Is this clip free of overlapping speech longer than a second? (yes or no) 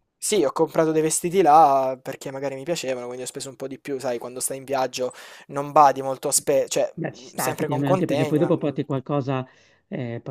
no